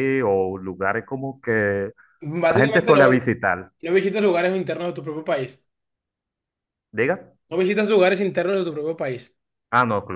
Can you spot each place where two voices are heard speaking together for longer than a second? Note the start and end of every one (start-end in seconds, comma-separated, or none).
2.5-3.7